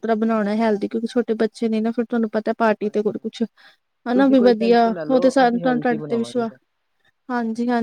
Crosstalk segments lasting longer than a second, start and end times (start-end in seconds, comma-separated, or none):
4.1-6.5